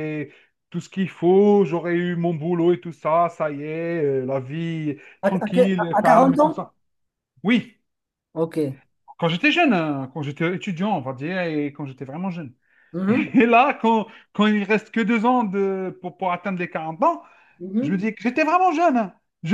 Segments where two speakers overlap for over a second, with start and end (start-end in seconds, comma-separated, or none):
5.2-6.6